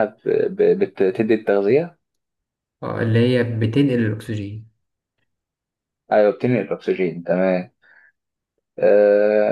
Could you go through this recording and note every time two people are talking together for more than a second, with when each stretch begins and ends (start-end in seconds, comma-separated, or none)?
none